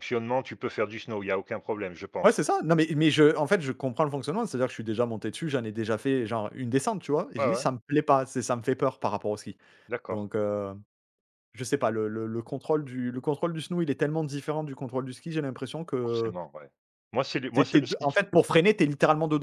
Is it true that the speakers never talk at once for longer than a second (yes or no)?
yes